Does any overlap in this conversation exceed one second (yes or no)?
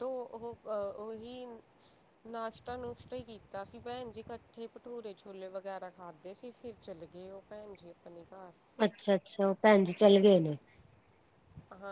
no